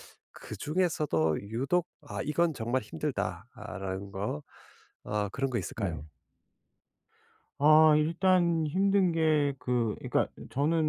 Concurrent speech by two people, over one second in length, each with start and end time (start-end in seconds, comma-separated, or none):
none